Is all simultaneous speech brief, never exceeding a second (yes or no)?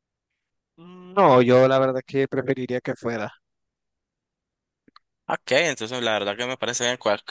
yes